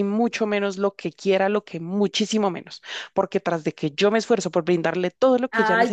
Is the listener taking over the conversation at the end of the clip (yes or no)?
yes